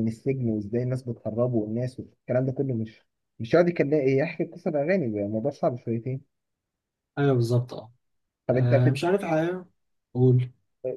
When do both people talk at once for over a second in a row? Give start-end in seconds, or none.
none